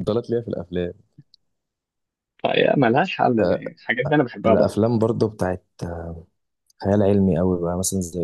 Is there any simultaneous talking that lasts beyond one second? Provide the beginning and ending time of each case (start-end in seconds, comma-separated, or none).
none